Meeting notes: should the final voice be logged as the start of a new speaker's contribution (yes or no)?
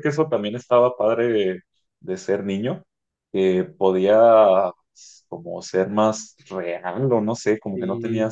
no